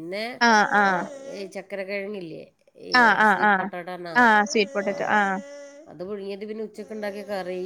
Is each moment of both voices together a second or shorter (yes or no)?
yes